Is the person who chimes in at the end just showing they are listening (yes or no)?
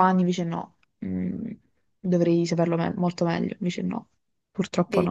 no